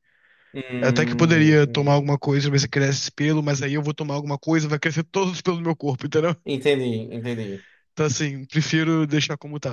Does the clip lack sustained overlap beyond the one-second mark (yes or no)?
no